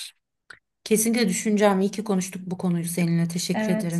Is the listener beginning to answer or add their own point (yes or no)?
yes